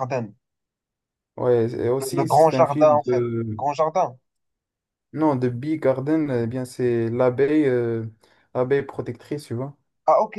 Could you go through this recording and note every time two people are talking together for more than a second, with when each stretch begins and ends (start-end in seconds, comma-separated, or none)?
2.0-3.6